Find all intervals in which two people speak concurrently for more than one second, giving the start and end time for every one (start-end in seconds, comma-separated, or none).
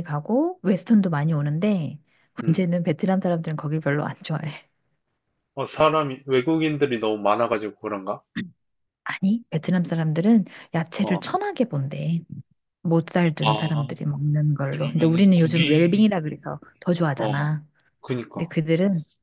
14.7-16.1